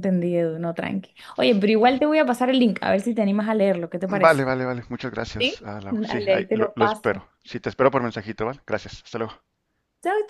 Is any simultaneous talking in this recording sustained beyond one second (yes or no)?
yes